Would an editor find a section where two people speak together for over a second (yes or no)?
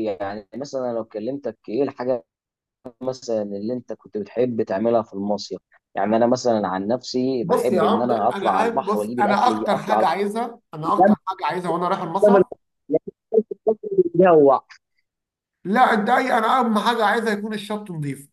yes